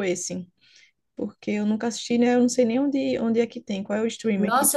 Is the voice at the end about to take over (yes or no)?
yes